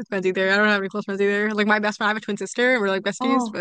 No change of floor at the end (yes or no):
no